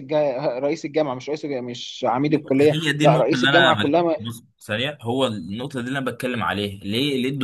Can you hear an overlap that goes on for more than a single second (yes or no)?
yes